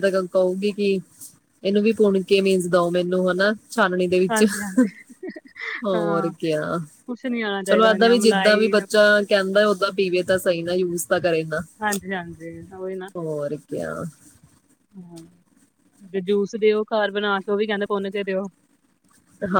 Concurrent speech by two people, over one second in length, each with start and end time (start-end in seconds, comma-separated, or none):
7.7-9.1